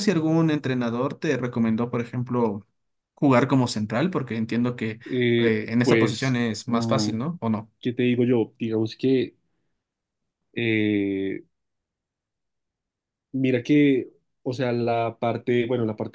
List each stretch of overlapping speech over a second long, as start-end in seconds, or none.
5.4-7.1